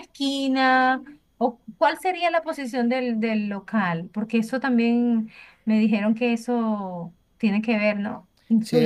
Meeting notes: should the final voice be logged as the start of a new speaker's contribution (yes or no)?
yes